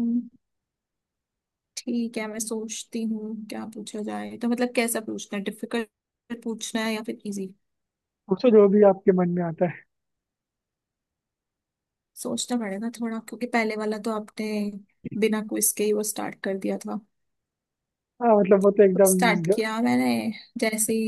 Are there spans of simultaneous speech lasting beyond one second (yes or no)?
no